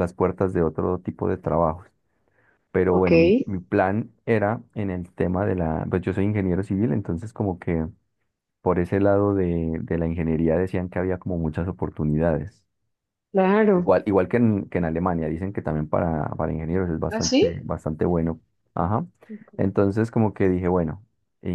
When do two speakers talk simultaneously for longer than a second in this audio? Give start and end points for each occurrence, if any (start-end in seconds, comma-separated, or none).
none